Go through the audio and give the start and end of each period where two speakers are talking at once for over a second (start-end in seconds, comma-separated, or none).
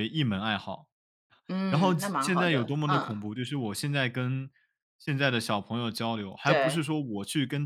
1.7-3.2